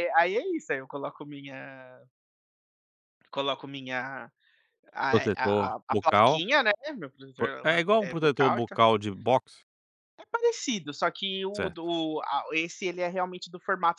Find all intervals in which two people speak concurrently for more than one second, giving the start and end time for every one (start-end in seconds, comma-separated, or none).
5.1-6.4, 7.4-8.8